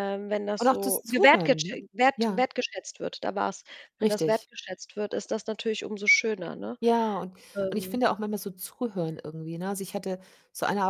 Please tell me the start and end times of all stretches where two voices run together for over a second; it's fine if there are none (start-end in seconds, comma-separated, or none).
0.6-2.4